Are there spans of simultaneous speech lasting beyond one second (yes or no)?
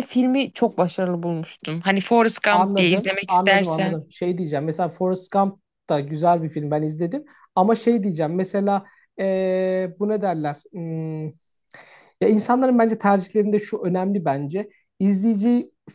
yes